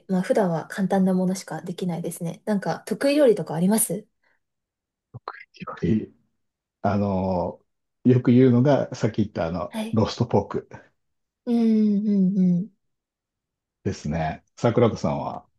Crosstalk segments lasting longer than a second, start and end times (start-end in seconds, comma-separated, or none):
none